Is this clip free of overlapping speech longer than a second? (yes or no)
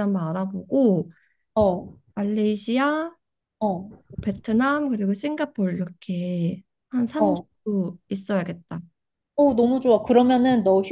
yes